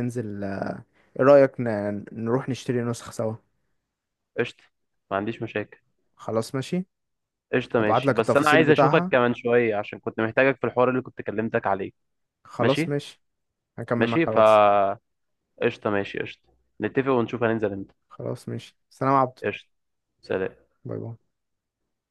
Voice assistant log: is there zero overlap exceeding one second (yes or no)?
no